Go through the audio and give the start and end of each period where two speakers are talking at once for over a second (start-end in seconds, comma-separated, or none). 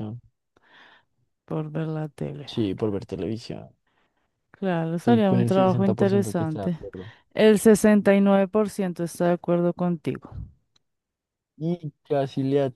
4.9-6.8